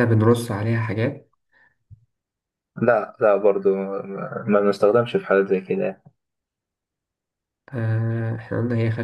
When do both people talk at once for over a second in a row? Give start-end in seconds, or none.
none